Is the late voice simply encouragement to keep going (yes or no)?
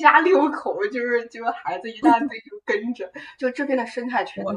yes